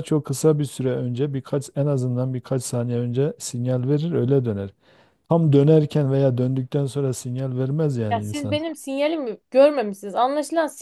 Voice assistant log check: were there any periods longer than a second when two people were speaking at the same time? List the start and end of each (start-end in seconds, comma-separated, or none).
none